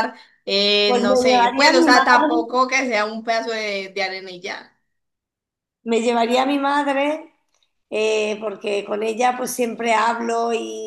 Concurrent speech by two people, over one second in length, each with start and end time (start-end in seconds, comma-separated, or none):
0.8-2.6